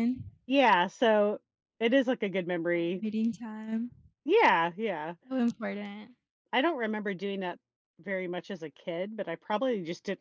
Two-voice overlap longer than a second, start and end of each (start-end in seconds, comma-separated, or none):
none